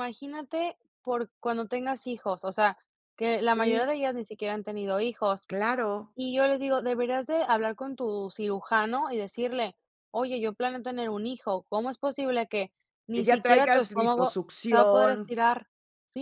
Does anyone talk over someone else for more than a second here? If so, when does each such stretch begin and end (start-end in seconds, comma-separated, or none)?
13.1-15.3